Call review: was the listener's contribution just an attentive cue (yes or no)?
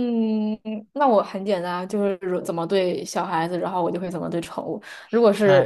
yes